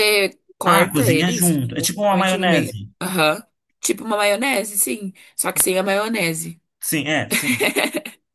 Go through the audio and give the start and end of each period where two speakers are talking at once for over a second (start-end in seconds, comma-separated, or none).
0.6-2.9